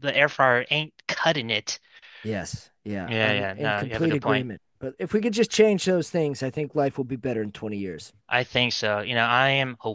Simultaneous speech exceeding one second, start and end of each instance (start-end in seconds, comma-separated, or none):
3.0-4.5